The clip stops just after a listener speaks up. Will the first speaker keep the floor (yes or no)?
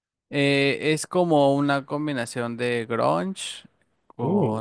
yes